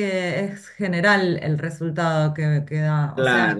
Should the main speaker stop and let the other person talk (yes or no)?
yes